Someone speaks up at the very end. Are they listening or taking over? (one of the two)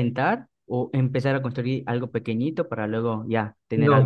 taking over